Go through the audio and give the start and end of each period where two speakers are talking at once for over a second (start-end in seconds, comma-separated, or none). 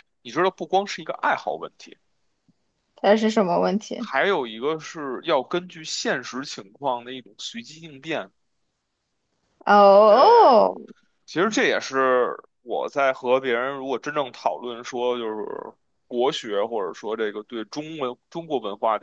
none